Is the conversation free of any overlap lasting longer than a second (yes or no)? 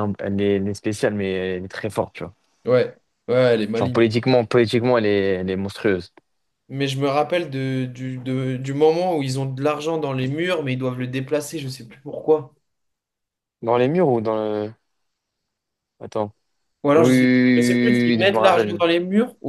no